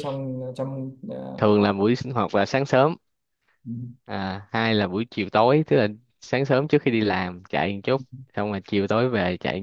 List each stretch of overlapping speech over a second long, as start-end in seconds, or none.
none